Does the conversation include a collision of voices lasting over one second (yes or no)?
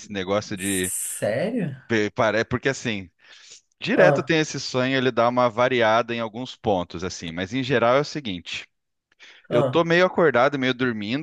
no